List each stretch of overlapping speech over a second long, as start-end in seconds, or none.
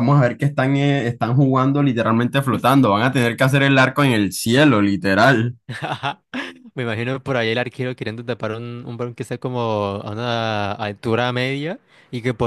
none